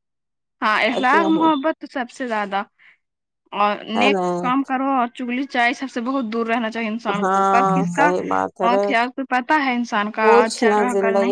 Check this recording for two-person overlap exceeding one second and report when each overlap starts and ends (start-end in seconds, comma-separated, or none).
7.1-8.9